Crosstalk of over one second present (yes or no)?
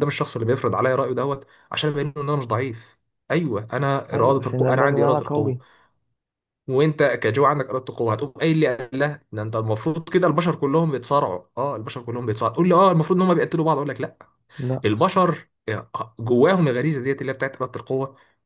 yes